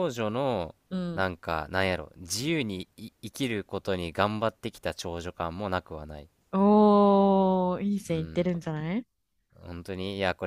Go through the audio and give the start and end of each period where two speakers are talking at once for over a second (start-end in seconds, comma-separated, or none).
none